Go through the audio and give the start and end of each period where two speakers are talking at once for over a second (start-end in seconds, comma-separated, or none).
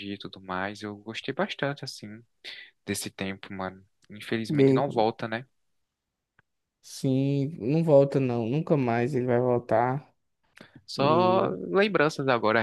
none